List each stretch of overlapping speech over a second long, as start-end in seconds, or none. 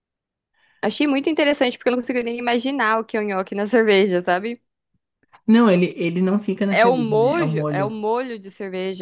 6.7-7.9